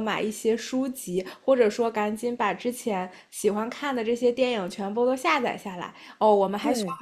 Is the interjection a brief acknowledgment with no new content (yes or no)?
yes